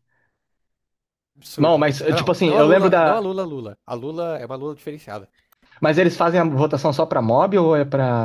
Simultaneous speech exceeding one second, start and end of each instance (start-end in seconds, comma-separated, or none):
1.6-3.2